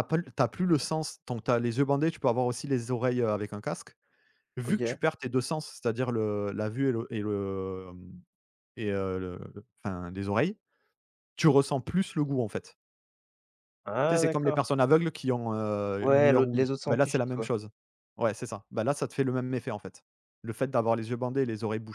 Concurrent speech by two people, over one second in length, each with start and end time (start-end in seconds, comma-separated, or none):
16.0-17.5